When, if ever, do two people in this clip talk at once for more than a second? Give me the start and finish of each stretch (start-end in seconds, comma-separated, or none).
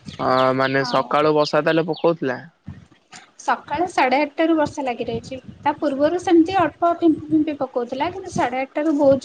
none